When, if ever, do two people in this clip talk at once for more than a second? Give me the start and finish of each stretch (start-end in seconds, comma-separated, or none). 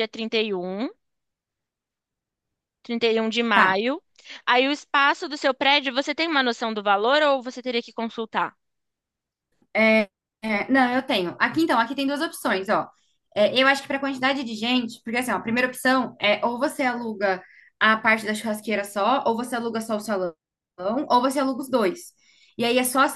none